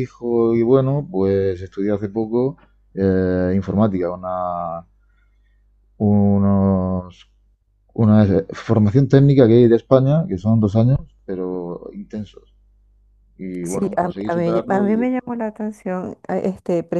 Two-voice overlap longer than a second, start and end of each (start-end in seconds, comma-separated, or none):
13.6-15.1